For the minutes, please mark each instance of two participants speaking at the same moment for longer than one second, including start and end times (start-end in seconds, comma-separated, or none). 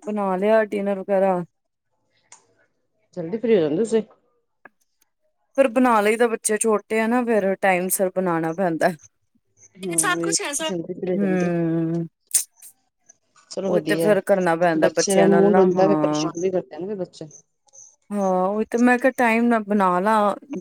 14.8-16.3